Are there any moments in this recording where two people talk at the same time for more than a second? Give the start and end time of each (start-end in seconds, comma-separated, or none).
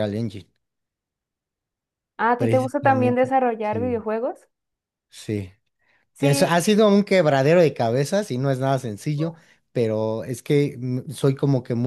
2.4-4.0